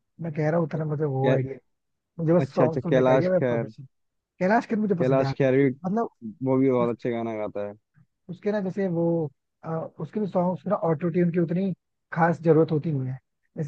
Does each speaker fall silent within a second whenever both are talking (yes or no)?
no